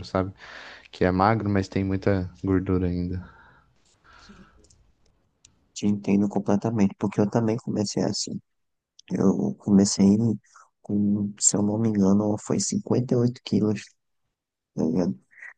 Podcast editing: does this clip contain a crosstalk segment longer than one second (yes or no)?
no